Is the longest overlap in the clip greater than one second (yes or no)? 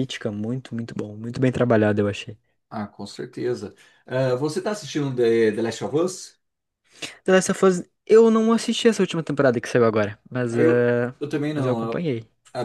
no